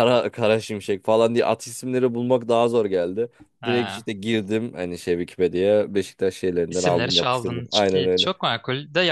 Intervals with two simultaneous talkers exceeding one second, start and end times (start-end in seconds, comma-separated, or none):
6.7-8.3